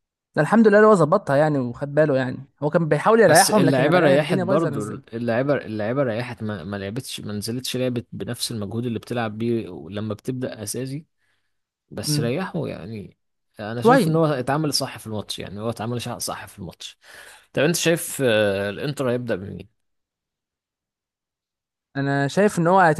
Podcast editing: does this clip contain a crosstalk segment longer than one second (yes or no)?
yes